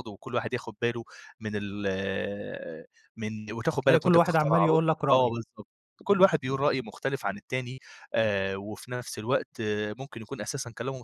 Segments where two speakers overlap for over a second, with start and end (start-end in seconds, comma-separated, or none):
3.8-5.3